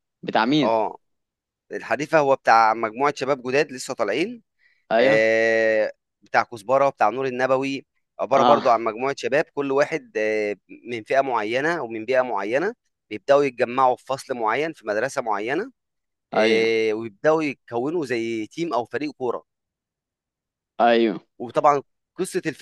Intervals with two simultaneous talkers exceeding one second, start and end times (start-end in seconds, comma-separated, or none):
none